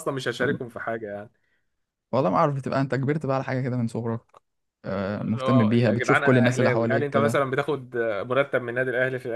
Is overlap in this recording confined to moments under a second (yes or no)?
no